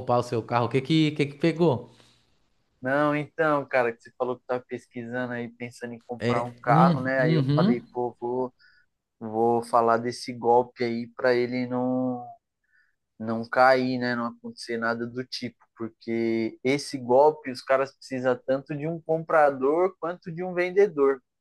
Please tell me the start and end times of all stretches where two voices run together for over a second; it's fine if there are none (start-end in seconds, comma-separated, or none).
6.2-7.8